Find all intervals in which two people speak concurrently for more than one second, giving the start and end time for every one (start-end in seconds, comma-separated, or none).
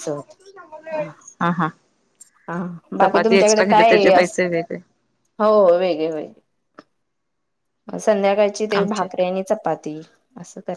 3.0-4.4